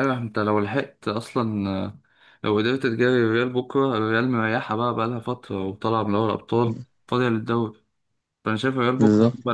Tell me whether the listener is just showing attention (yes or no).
yes